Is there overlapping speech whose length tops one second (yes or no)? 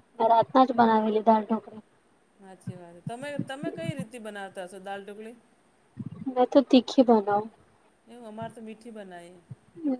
no